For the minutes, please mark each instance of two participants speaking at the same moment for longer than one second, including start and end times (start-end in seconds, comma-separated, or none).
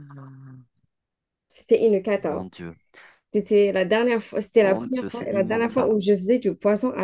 4.6-5.9